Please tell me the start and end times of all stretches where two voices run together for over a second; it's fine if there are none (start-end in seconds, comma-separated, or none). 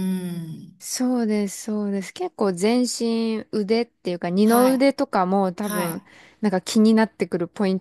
none